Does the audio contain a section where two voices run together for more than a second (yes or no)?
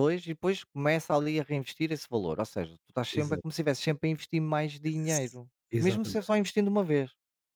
yes